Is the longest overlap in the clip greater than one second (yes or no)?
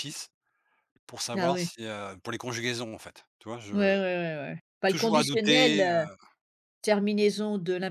yes